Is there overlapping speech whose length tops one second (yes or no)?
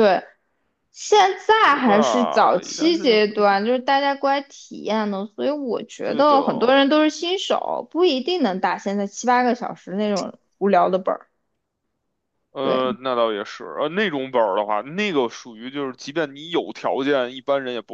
yes